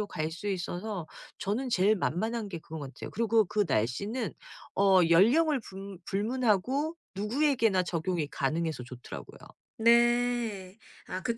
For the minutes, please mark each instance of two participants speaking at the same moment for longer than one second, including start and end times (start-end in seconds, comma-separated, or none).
none